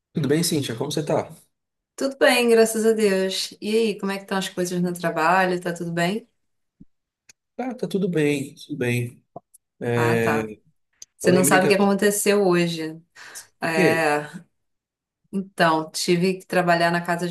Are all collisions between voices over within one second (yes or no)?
yes